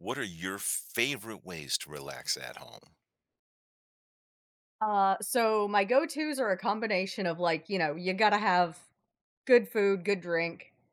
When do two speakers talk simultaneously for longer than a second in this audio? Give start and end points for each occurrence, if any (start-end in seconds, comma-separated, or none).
none